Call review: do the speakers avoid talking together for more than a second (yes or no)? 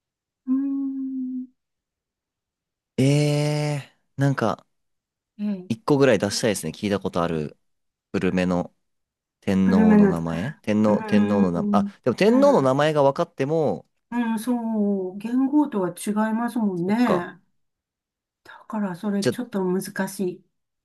no